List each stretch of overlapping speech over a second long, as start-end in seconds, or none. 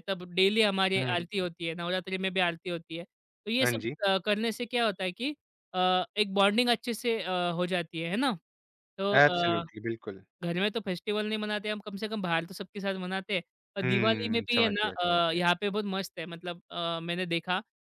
13.8-15.4